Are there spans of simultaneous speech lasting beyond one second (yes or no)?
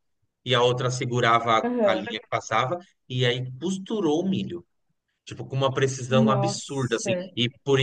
yes